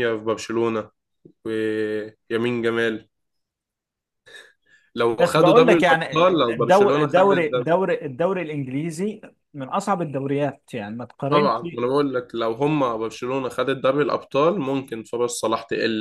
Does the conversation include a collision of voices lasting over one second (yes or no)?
yes